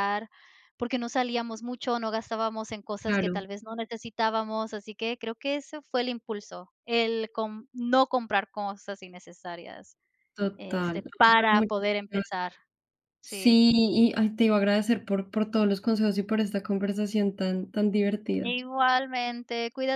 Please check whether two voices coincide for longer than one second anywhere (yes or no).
yes